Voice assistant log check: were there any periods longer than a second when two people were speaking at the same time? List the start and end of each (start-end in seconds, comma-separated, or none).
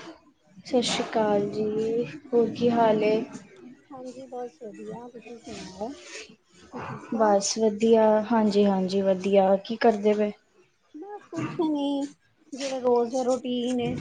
none